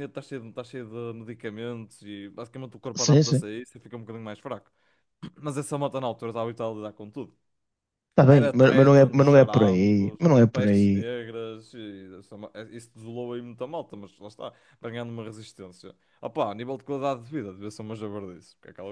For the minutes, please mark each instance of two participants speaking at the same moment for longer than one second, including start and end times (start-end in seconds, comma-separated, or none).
8.3-11.1